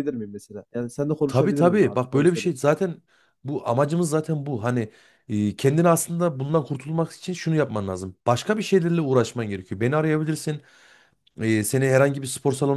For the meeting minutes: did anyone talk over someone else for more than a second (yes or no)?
yes